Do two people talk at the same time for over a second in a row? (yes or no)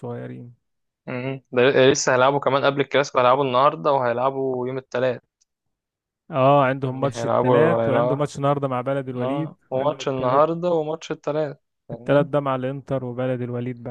yes